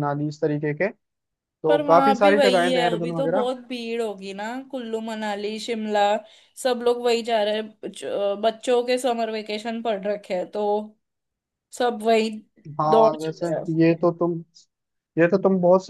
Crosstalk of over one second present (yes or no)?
yes